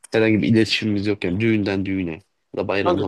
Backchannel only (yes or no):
no